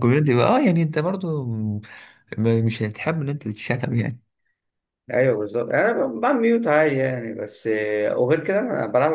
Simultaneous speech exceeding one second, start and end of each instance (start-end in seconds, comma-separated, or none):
none